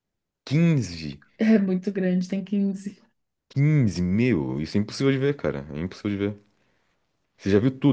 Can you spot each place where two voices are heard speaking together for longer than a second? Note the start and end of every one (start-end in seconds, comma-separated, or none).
none